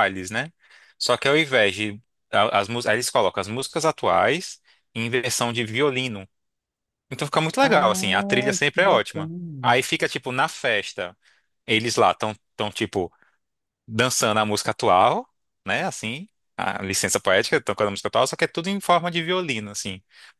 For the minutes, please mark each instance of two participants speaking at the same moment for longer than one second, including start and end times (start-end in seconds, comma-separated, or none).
7.6-9.7